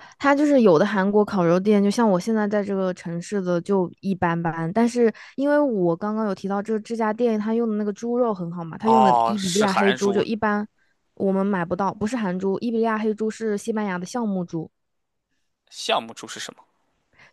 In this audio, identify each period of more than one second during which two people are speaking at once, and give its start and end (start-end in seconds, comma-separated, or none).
8.8-10.2